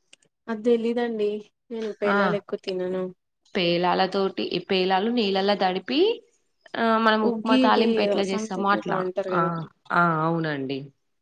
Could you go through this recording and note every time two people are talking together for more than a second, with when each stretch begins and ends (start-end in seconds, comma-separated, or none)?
7.3-9.0